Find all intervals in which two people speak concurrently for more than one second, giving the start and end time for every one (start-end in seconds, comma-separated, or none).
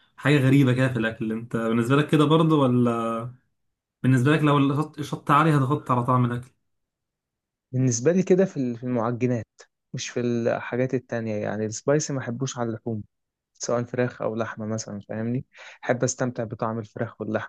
none